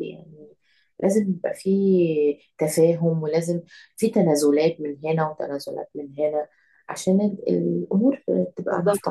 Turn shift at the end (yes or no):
yes